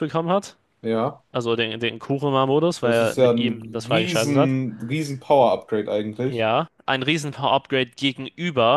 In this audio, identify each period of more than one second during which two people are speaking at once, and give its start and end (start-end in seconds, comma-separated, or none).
2.8-4.6